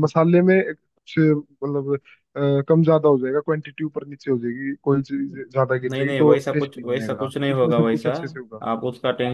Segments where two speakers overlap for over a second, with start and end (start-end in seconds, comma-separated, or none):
5.9-8.1